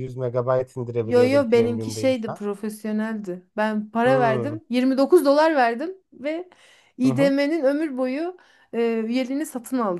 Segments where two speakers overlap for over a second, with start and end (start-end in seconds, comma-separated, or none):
1.0-2.4